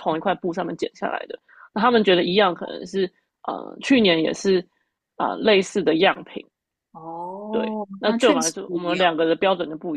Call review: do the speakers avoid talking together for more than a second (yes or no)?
no